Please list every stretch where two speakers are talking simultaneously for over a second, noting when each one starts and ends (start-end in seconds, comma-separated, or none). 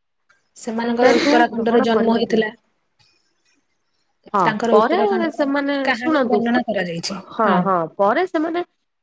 0.8-2.5